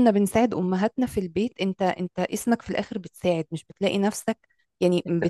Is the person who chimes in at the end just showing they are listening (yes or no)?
yes